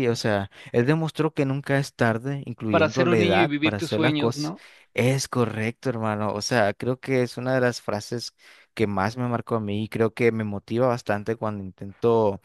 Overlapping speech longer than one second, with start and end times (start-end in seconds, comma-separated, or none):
2.7-4.5